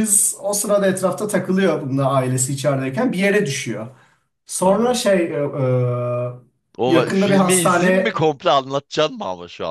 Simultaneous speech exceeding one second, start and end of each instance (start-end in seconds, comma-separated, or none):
6.9-8.2